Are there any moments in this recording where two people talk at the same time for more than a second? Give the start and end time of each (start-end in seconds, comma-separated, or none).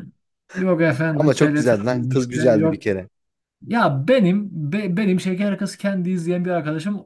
1.1-2.8